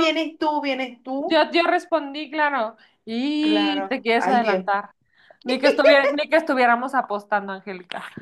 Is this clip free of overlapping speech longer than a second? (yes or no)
no